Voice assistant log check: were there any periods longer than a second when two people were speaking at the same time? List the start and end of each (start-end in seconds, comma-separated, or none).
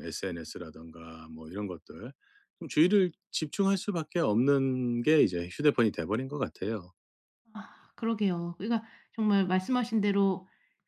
none